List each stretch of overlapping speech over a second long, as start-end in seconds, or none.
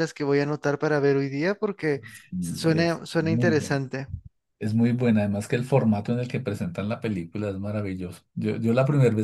2.4-3.8